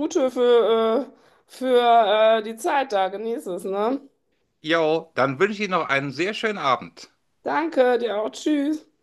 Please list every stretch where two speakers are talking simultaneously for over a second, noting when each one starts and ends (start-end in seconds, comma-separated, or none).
none